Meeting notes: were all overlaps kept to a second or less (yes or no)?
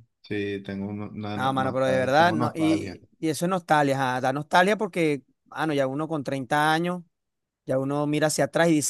no